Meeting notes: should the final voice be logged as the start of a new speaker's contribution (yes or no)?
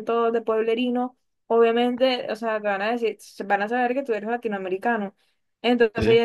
no